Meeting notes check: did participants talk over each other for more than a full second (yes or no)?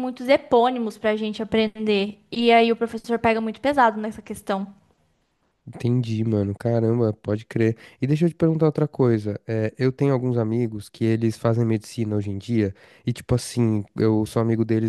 no